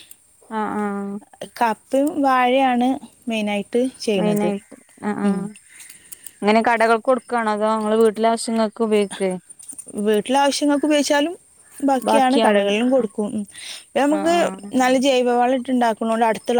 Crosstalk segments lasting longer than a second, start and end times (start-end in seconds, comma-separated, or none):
none